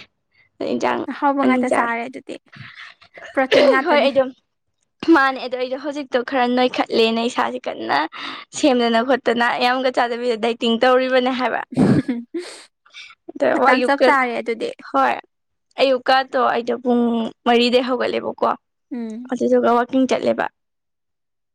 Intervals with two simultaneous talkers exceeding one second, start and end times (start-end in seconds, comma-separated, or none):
none